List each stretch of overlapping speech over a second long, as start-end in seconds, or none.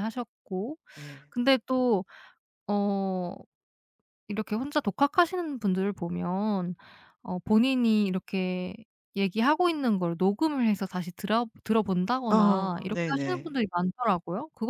12.3-13.6